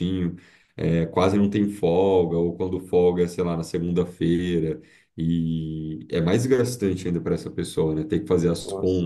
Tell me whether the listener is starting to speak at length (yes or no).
no